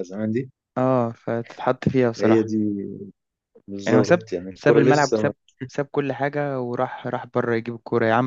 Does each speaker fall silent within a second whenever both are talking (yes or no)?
no